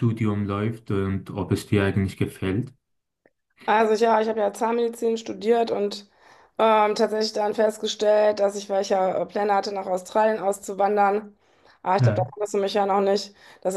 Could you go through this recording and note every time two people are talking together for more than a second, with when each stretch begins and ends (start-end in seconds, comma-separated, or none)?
none